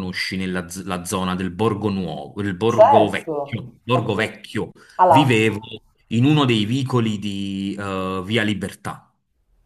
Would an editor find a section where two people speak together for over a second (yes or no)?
yes